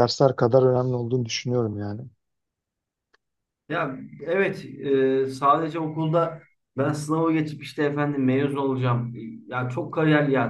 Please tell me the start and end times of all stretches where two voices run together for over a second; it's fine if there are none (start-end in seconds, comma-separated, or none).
none